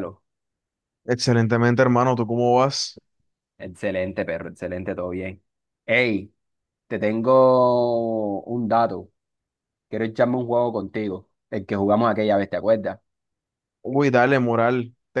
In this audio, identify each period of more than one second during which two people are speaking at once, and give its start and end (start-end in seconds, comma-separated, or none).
none